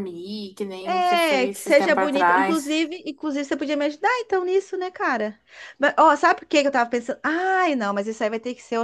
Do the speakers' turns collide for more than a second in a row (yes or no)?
yes